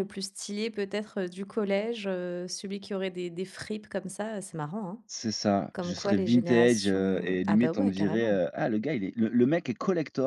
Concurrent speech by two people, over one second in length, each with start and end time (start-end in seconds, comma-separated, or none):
5.7-8.4